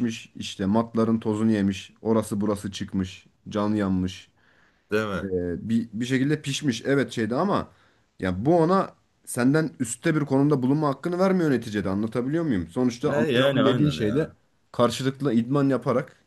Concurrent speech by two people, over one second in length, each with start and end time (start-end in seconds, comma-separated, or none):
13.1-14.3